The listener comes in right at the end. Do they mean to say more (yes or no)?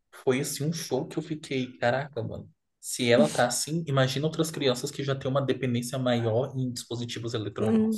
yes